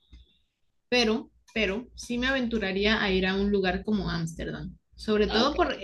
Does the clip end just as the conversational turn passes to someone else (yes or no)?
no